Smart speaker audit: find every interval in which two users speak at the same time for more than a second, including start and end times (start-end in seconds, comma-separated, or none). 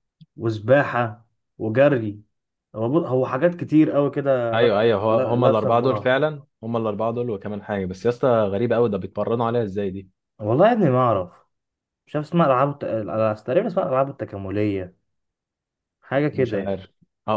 4.5-6.2